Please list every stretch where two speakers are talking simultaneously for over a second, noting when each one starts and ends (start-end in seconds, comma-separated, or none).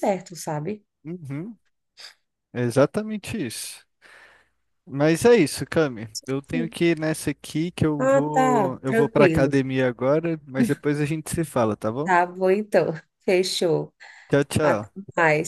8.0-9.5